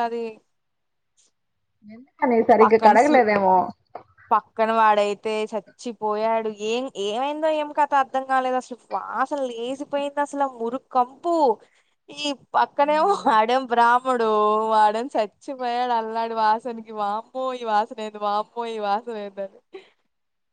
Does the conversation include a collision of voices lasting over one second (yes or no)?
no